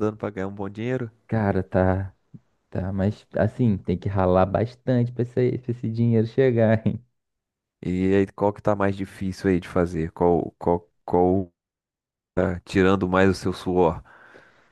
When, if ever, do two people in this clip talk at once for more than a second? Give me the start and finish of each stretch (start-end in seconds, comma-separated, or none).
none